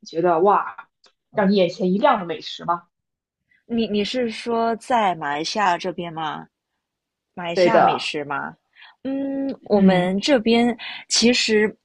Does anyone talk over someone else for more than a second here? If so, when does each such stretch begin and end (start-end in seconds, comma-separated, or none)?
none